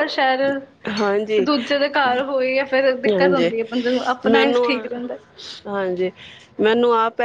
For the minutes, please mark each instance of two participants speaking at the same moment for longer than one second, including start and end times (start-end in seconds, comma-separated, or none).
none